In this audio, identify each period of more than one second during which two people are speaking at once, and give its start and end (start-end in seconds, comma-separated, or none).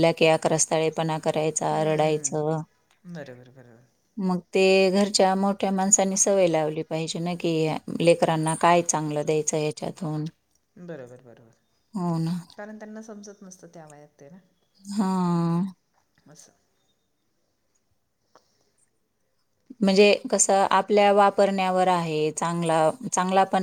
none